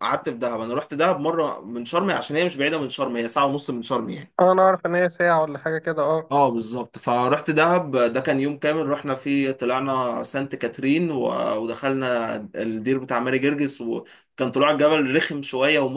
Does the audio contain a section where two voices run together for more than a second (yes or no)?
no